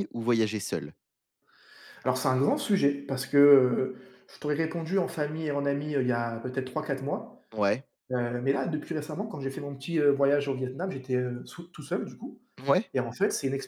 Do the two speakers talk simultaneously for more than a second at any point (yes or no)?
no